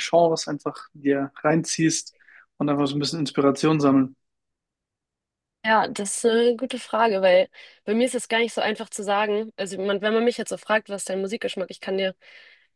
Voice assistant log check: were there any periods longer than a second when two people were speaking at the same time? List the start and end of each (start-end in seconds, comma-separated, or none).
none